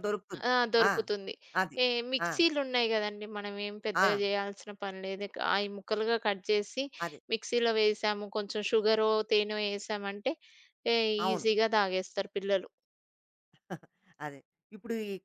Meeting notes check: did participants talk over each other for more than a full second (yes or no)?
no